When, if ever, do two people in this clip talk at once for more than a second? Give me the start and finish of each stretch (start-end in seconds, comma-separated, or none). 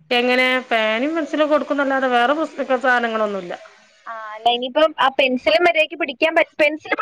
none